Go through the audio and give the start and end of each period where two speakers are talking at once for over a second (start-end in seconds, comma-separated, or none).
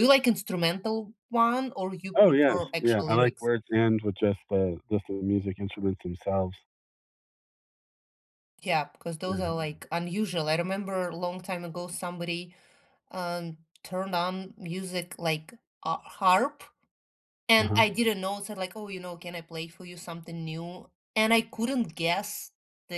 2.1-3.5